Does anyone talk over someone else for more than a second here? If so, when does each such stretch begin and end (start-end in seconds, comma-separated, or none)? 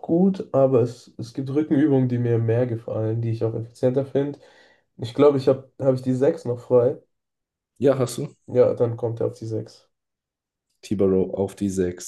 none